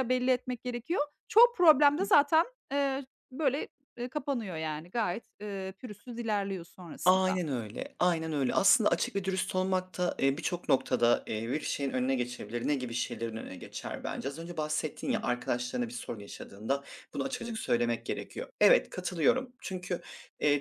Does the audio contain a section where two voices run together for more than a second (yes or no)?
no